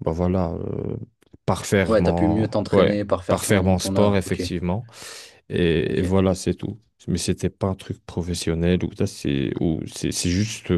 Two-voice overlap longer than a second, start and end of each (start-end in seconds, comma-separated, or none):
1.9-4.5